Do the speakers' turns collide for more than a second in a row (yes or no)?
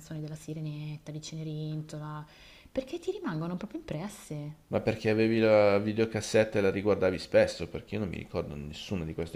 no